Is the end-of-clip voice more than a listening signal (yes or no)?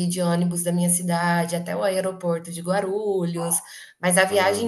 no